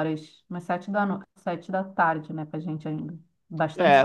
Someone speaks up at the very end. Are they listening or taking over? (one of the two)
taking over